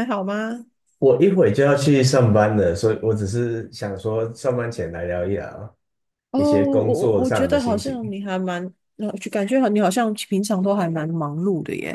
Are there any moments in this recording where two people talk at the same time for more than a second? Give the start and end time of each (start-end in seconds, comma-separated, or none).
6.3-8.0